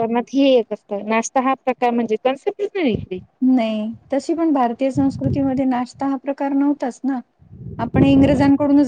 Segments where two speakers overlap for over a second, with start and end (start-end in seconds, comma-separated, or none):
none